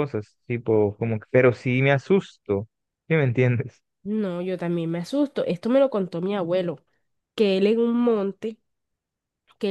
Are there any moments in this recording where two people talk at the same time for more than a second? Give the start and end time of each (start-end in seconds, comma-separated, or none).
none